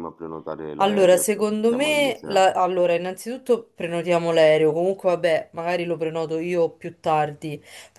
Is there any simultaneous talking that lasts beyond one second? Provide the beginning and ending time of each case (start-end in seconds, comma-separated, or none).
0.8-2.5